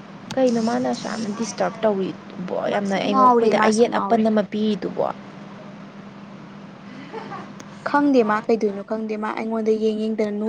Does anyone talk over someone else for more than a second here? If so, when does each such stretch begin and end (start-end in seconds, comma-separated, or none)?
2.7-4.2